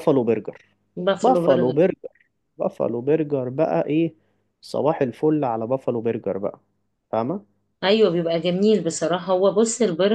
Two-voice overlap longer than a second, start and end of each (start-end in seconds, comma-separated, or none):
none